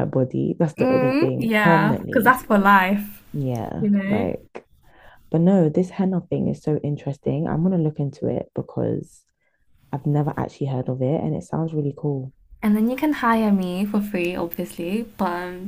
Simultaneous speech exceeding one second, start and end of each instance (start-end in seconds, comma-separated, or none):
0.8-2.4